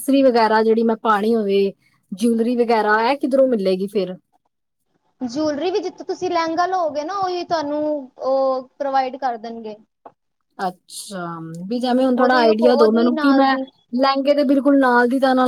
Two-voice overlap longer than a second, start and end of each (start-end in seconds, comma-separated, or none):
12.2-13.5